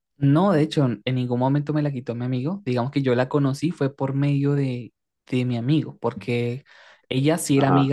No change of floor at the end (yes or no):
yes